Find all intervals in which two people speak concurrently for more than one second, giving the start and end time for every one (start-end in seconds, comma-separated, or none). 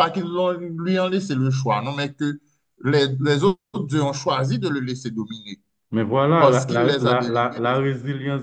6.4-7.9